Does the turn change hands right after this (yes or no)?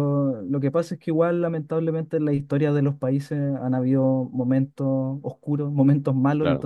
no